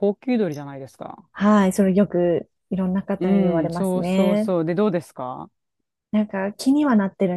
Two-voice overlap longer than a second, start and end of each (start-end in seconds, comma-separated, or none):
3.2-4.5